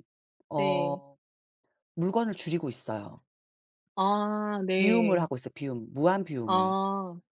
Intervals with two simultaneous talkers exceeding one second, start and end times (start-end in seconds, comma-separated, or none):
none